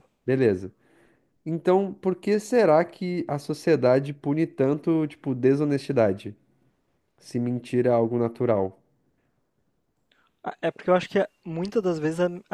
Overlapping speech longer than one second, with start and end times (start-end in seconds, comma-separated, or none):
none